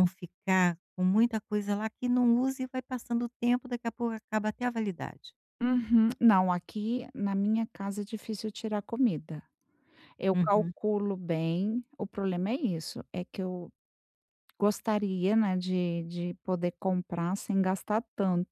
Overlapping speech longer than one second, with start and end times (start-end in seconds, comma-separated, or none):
none